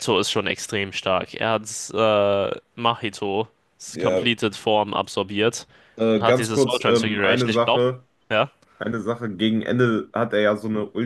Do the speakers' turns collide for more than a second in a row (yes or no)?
yes